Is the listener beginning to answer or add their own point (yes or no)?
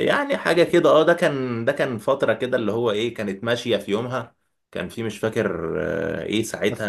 no